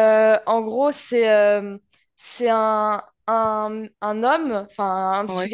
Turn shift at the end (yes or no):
no